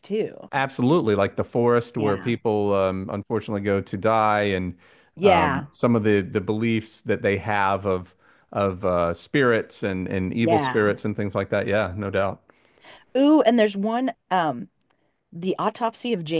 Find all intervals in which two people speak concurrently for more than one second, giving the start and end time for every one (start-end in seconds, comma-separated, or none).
none